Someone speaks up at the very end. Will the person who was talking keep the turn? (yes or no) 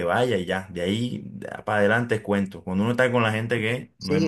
no